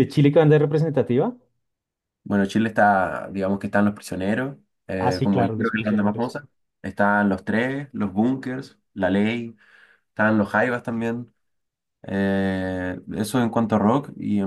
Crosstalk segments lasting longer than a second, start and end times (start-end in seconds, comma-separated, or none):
5.0-6.4